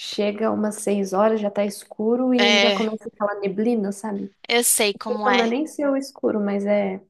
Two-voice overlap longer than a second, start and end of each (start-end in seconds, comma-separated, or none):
none